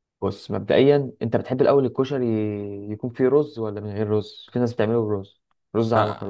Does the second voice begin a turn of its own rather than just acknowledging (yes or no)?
yes